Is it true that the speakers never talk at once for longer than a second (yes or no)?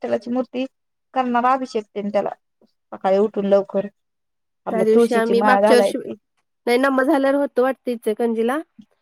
no